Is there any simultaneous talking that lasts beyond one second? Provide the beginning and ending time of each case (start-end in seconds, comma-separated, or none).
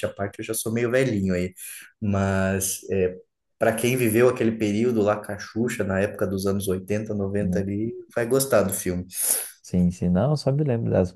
none